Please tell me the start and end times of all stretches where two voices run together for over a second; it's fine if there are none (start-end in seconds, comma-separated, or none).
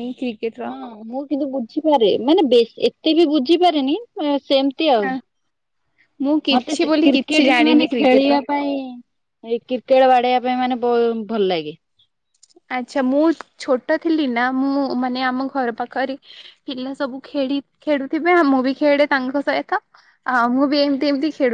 6.6-8.4